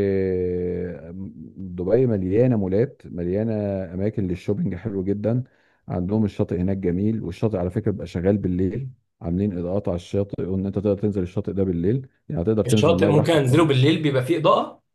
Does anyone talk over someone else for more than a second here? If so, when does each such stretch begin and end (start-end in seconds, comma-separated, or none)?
12.7-13.9